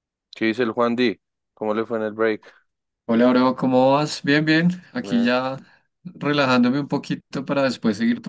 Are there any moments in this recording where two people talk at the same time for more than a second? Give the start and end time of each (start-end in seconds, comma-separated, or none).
none